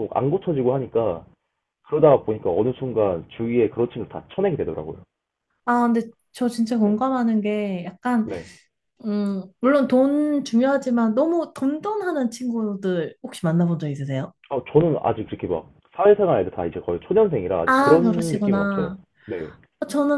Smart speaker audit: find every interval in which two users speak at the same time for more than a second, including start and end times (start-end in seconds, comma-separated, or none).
17.6-19.0